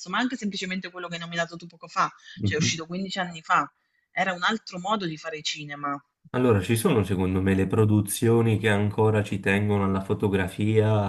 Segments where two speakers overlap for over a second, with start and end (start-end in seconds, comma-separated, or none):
none